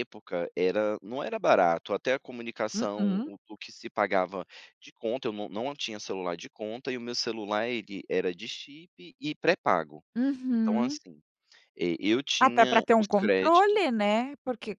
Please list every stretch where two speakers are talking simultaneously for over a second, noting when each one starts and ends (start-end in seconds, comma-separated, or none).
12.4-13.8